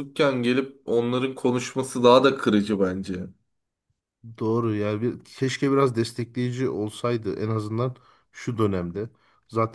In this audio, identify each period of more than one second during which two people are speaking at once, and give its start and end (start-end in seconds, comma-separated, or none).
none